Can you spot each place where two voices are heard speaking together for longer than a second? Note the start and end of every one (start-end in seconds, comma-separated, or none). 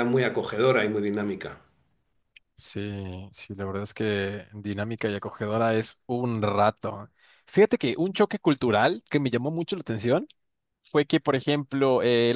none